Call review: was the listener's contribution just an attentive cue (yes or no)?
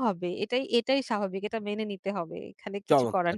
no